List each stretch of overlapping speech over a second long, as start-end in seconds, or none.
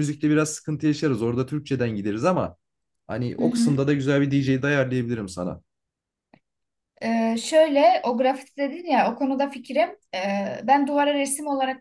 none